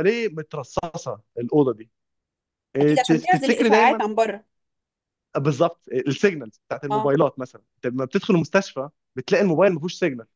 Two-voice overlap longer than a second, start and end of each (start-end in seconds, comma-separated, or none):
2.8-4.0